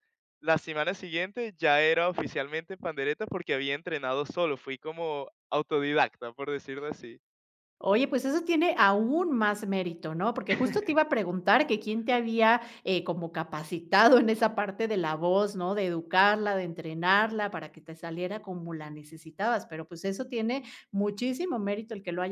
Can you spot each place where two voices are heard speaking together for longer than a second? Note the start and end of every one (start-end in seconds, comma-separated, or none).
none